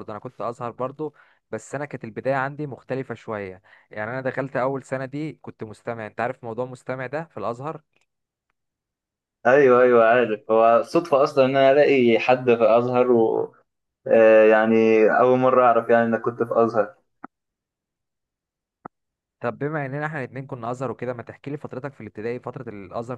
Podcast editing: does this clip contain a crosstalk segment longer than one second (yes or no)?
no